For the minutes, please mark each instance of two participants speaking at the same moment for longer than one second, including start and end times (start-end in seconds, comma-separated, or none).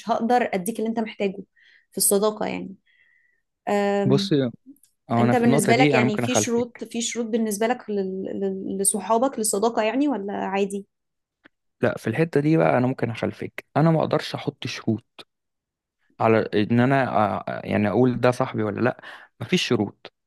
5.2-6.9